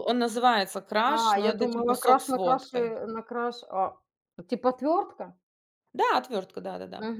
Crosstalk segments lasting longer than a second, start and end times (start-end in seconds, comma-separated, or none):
1.1-3.0